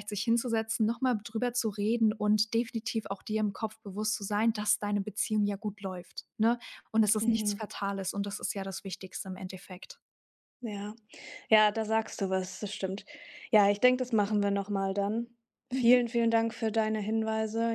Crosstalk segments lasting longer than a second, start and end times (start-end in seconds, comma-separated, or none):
none